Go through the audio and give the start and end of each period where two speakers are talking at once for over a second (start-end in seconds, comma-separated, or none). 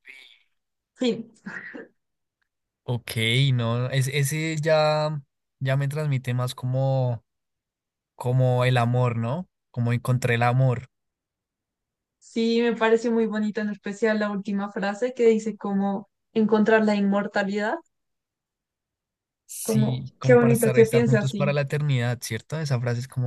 19.6-21.6